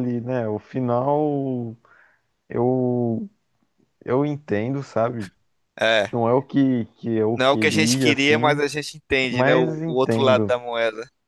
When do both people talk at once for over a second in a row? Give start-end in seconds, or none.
7.3-8.7, 9.3-10.6